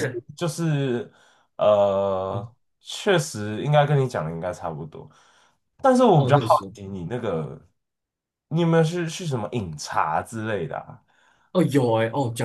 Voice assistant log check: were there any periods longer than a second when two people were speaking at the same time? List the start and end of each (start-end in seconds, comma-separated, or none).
none